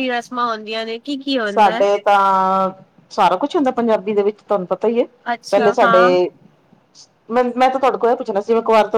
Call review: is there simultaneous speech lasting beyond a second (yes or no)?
no